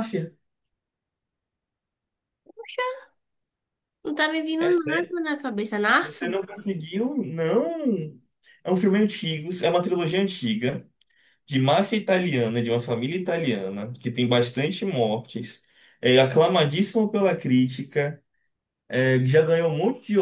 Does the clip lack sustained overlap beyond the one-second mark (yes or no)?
yes